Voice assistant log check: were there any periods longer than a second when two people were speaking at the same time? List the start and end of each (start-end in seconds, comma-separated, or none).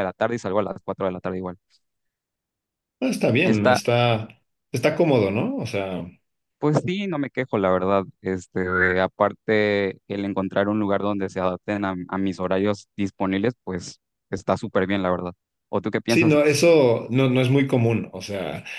none